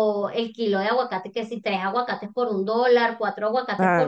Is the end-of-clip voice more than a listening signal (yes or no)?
yes